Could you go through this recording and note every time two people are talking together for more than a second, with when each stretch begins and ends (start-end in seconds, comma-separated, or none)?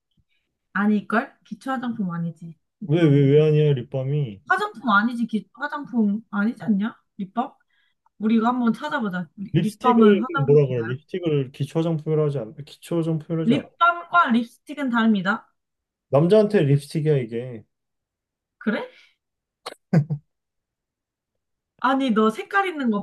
9.5-10.9